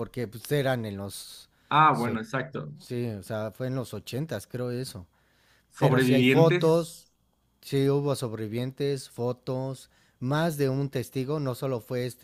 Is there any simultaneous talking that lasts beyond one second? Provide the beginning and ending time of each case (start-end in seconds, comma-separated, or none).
5.8-7.1